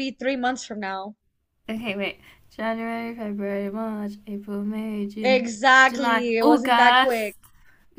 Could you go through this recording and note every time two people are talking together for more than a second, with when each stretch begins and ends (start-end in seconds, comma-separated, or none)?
5.2-7.3